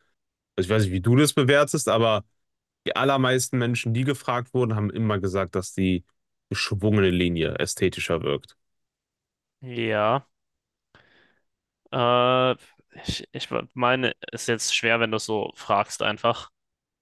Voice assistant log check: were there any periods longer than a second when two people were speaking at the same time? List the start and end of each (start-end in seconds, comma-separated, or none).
none